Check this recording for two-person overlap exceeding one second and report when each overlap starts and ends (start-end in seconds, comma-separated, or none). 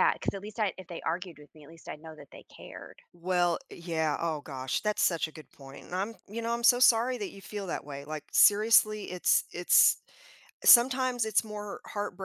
none